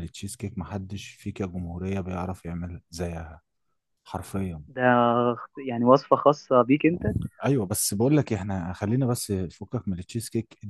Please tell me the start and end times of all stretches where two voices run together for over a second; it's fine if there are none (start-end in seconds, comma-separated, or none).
none